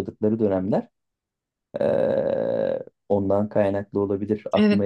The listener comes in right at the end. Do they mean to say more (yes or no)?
yes